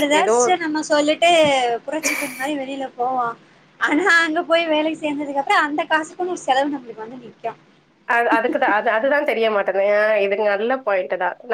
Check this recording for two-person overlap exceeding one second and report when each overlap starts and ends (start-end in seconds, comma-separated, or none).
none